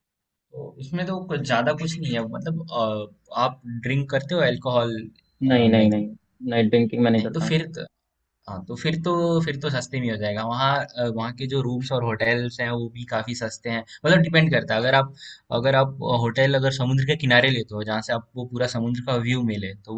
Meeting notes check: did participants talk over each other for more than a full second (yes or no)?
no